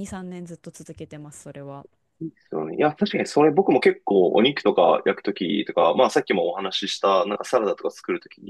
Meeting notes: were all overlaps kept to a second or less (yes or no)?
yes